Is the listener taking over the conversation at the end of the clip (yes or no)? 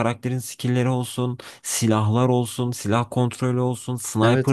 yes